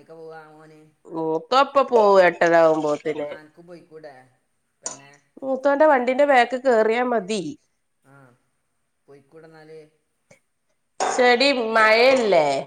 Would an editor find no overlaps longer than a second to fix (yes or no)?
yes